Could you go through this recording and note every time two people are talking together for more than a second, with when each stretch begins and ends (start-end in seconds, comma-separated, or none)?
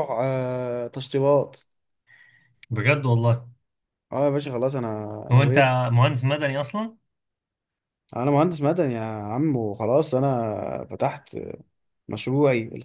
none